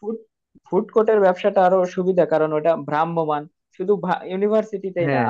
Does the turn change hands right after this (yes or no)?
no